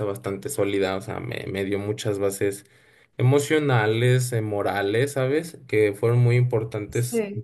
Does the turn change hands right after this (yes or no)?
no